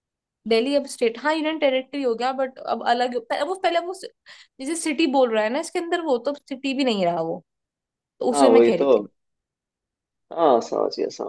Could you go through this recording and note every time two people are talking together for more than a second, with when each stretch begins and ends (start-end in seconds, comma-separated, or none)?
none